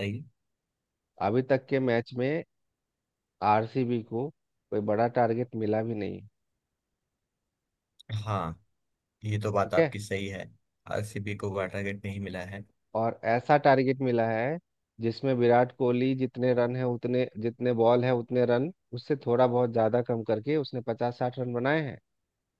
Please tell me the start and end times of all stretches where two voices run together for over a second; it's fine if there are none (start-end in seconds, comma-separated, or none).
none